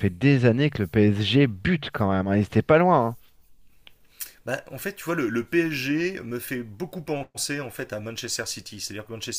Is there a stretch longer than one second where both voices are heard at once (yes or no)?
no